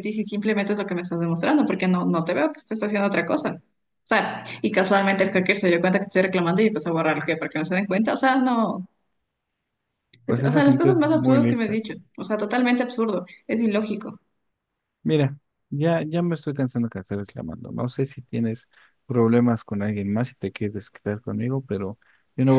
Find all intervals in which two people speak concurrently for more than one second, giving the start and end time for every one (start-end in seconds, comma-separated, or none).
10.3-11.8